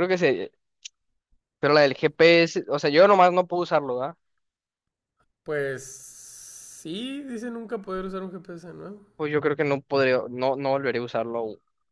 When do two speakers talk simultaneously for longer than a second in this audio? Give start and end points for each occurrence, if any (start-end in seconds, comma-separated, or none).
none